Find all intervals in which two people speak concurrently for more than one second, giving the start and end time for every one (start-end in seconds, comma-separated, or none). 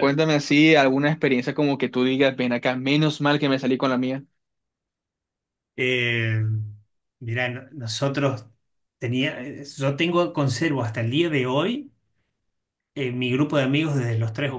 none